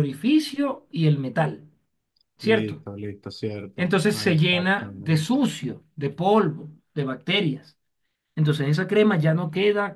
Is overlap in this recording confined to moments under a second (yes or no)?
no